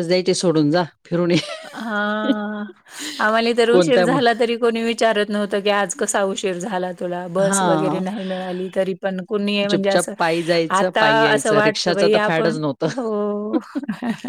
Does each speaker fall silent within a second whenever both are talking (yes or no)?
no